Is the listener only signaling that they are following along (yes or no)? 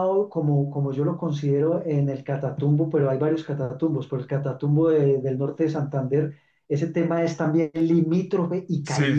no